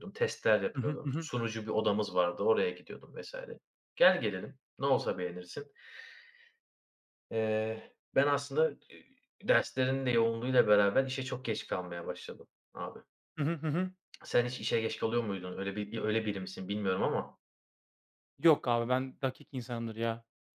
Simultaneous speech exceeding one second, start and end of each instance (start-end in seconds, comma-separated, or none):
none